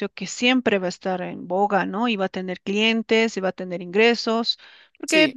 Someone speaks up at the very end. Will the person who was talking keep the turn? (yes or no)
yes